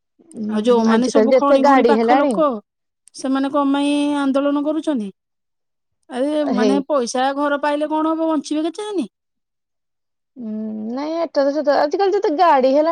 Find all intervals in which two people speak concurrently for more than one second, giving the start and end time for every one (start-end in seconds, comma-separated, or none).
0.6-2.3